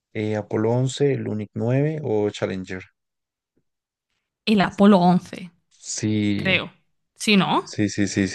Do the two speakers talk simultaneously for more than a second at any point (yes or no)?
no